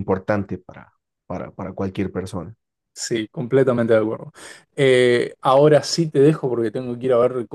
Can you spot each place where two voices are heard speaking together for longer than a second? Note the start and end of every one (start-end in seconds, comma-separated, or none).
none